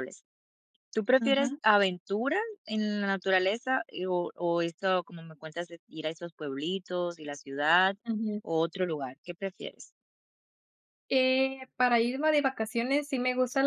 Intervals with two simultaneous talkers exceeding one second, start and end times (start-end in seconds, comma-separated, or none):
none